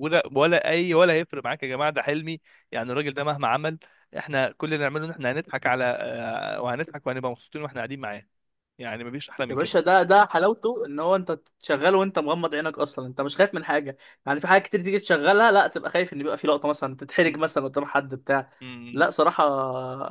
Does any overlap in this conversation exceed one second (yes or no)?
no